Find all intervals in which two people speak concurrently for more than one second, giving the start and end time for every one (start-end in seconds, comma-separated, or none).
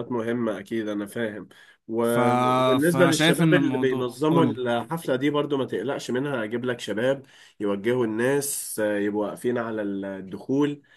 2.8-4.6